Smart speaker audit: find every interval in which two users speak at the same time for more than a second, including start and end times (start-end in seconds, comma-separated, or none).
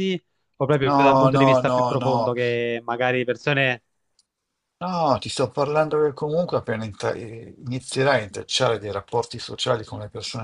0.8-2.4